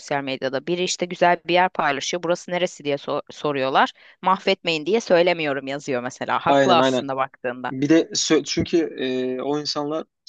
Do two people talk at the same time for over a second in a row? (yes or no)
no